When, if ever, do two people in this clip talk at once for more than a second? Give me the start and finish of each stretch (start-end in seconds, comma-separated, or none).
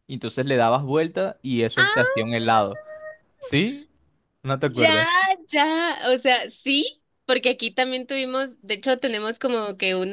none